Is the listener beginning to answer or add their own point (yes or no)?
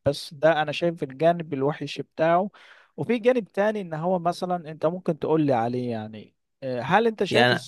yes